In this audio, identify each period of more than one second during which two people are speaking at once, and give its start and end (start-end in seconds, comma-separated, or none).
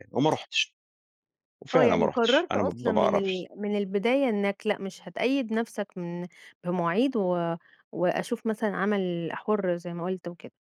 1.7-3.5